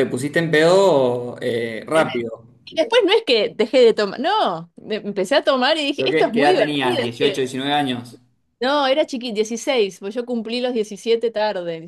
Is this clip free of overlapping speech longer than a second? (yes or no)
no